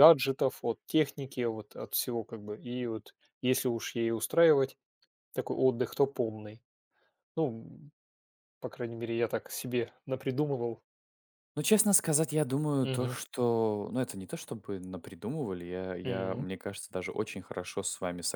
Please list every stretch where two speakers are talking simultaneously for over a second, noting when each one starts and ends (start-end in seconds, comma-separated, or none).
none